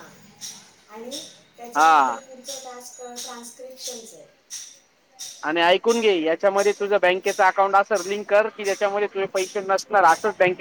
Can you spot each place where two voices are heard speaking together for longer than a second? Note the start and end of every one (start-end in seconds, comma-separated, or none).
none